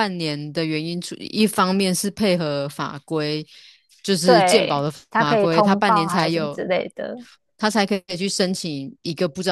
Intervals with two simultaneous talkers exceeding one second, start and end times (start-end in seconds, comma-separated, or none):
4.2-6.6